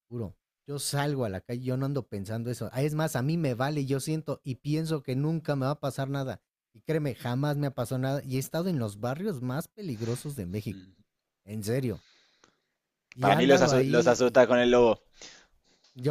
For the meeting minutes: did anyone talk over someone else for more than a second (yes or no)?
yes